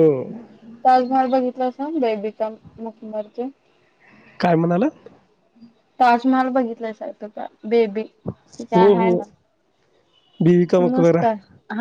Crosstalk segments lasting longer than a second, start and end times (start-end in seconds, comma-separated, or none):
none